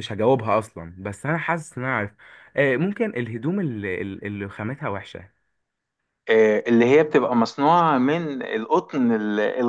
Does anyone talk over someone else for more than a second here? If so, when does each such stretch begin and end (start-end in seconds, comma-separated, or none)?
none